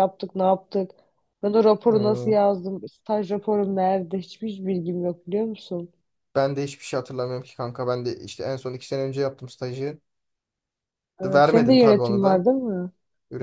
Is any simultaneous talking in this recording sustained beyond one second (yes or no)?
yes